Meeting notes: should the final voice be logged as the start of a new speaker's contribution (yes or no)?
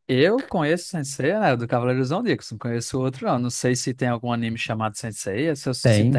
yes